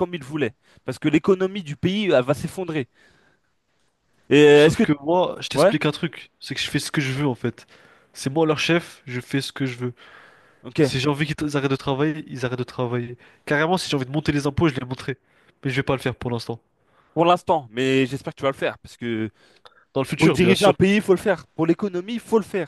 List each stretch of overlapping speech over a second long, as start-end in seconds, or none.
none